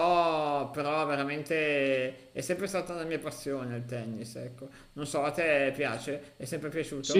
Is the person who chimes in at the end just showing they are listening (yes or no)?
no